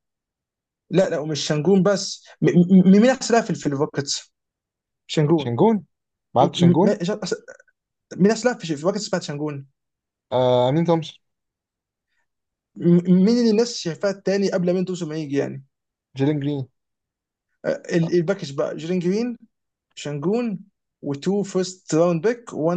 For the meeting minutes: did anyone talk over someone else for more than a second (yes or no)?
no